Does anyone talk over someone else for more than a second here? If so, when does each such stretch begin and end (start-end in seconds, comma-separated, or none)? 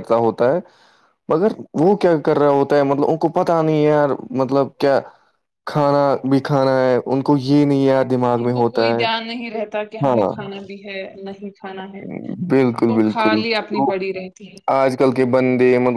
none